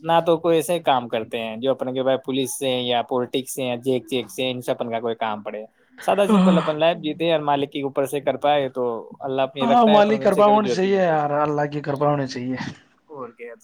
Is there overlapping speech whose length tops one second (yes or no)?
yes